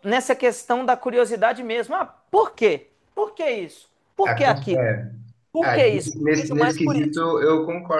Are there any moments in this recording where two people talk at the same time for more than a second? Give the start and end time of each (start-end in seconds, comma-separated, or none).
5.6-7.2